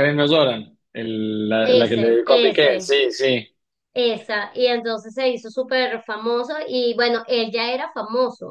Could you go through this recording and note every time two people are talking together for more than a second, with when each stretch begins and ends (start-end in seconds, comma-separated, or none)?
1.6-2.9